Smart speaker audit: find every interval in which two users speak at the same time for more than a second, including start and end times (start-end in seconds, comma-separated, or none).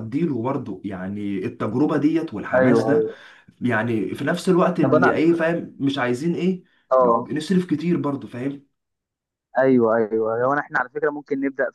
none